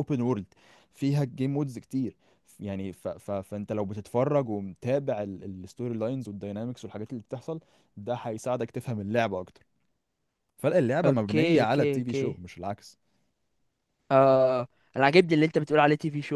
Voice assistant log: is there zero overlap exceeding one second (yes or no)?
no